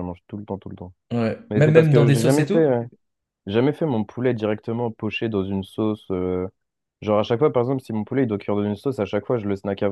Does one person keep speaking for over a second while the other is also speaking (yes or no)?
yes